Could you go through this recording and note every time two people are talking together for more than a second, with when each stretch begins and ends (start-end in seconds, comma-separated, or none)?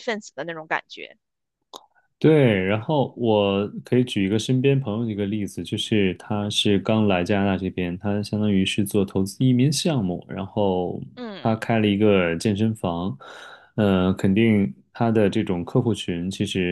none